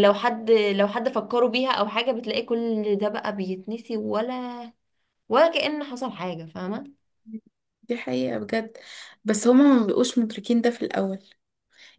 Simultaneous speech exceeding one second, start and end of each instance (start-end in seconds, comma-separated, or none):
none